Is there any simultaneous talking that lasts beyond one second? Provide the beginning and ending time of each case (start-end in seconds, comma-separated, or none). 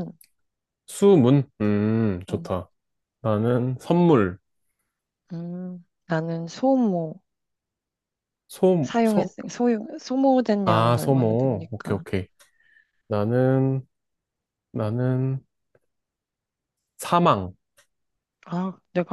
10.6-12.0